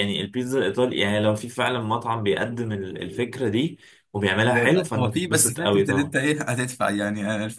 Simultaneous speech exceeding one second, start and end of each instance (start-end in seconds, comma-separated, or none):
4.5-6.1